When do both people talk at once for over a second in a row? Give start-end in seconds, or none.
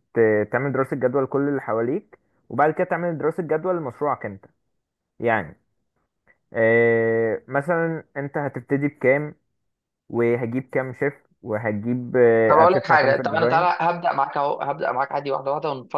12.5-13.7